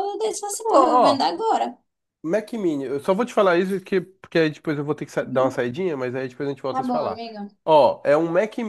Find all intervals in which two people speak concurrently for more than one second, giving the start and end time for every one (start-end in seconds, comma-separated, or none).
none